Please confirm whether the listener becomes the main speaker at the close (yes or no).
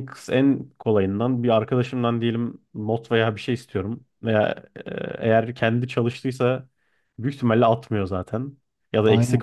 no